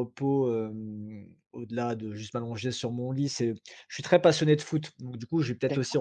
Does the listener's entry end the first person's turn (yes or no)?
no